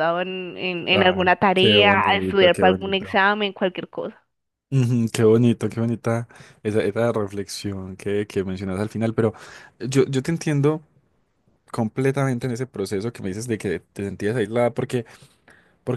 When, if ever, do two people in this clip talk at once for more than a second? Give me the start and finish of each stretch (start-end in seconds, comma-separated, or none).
0.9-3.2